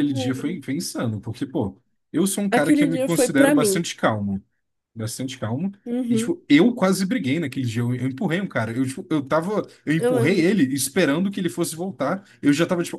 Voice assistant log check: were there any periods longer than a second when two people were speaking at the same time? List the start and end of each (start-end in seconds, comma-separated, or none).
2.5-3.8